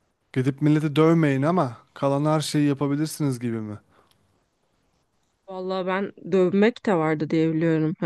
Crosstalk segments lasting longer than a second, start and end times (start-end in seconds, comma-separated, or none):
none